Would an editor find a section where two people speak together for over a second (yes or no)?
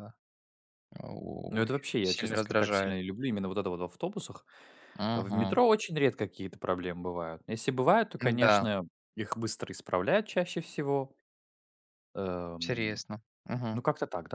yes